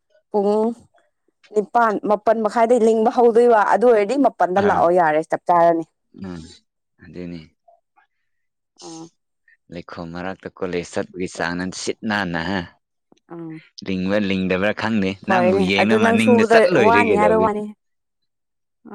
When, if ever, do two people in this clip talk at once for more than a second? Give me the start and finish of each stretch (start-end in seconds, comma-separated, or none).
15.8-17.5